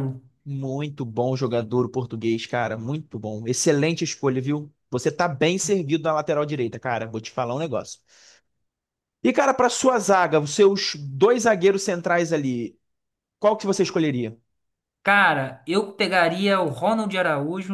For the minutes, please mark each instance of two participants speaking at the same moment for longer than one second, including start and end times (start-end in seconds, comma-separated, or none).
none